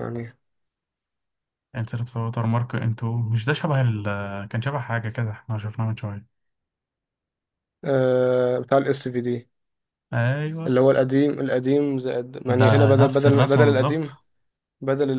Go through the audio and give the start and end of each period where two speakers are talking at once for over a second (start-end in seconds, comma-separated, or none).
12.5-14.2